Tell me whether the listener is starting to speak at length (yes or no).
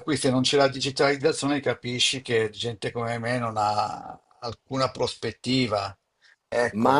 yes